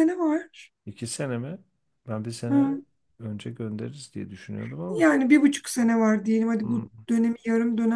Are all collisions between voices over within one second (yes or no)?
yes